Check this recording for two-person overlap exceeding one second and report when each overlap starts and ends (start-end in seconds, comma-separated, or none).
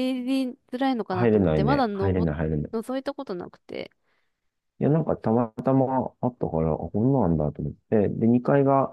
1.1-2.3